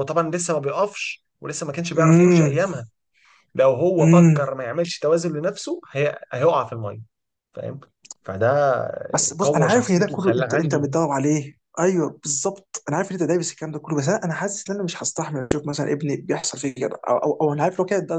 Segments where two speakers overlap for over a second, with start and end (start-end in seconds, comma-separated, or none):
9.4-10.8